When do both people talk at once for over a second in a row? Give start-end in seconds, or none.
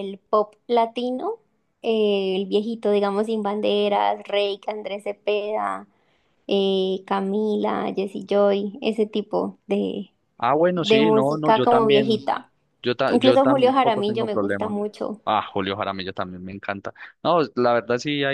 10.8-12.2, 13.1-14.8